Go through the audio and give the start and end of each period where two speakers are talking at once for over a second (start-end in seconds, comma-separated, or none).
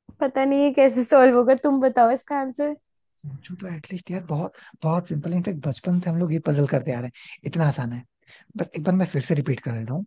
none